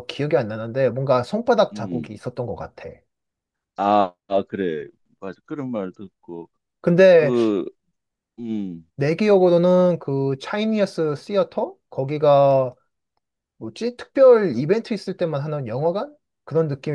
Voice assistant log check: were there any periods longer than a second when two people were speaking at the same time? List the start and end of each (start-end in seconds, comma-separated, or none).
none